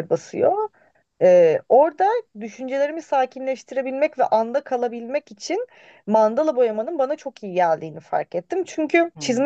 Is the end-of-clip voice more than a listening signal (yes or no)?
no